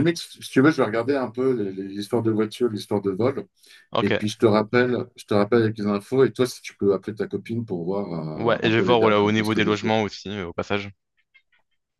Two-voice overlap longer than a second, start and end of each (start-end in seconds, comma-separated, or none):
8.3-9.9